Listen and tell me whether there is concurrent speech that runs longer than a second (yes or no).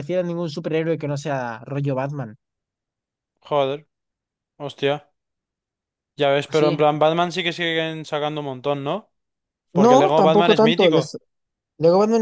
yes